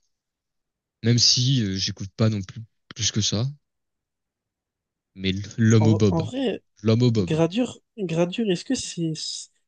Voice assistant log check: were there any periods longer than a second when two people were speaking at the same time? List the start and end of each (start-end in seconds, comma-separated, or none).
none